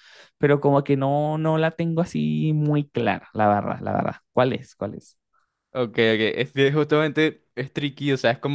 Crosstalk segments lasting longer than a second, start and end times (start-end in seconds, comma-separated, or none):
none